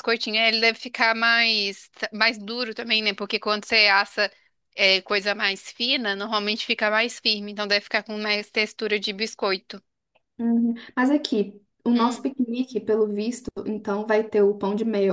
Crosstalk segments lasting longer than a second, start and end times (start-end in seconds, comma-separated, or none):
none